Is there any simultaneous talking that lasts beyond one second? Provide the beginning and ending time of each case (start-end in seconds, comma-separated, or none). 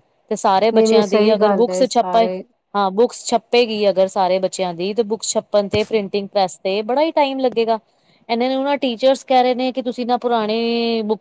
0.7-2.3